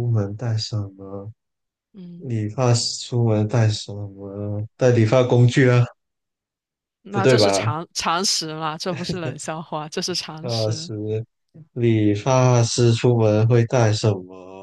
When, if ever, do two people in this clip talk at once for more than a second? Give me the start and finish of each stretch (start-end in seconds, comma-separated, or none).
none